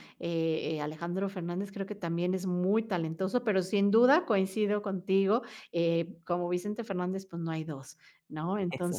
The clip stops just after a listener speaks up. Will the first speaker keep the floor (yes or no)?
yes